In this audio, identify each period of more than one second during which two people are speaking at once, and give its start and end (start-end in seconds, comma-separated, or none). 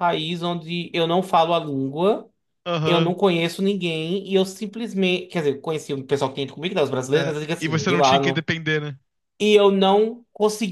7.1-8.5